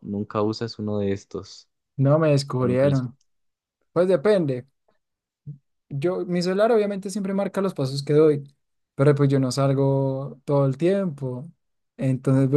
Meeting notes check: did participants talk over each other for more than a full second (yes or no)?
no